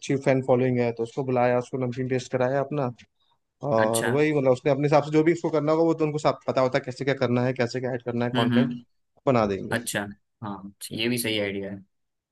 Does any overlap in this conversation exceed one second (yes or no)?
no